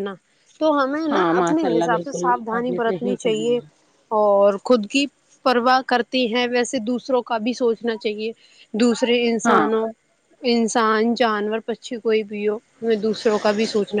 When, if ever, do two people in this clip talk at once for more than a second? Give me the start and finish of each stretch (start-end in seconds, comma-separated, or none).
1.1-3.6